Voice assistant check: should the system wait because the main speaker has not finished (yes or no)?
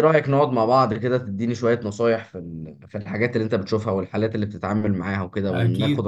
no